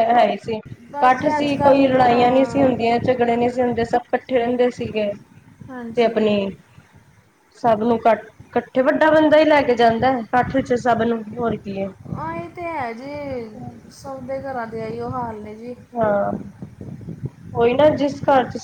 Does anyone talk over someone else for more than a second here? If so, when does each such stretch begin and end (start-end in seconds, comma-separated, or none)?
1.0-2.7